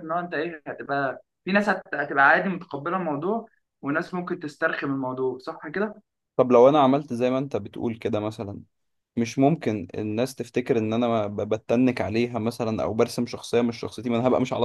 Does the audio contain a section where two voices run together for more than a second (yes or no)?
no